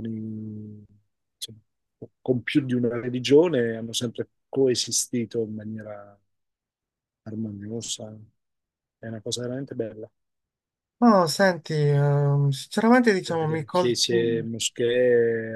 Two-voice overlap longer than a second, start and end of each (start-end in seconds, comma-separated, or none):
13.2-14.5